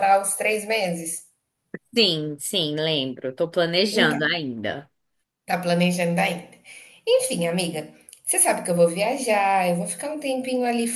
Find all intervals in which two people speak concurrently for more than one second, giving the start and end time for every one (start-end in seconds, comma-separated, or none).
none